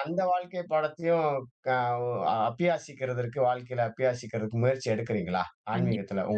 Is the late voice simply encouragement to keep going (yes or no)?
no